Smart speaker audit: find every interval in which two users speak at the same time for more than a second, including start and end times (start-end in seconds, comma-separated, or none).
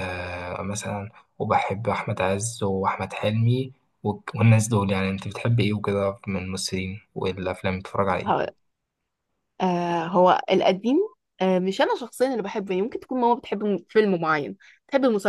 none